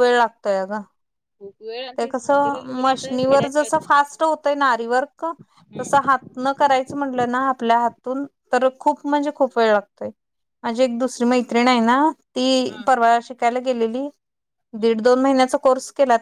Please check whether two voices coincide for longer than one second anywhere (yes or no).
yes